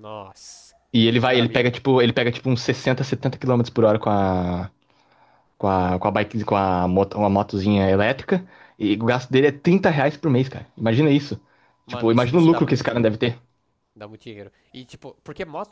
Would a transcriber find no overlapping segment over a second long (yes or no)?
no